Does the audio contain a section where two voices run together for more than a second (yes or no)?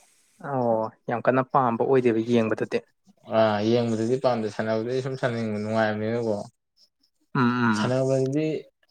no